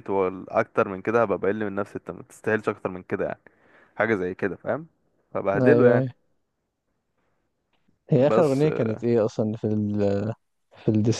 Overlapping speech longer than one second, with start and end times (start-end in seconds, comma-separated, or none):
none